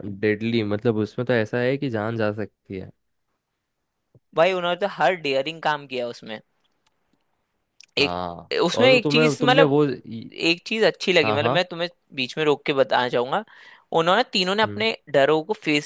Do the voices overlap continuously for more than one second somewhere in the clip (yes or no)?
yes